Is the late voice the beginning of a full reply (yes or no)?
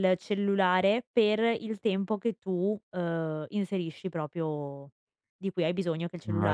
no